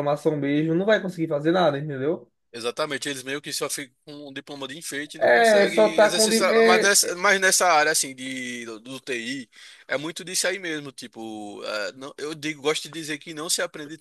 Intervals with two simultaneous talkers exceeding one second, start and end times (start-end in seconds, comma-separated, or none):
5.2-7.2